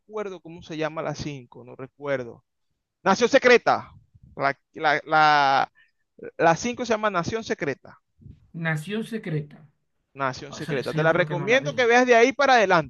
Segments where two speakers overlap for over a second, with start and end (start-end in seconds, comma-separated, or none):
10.5-11.9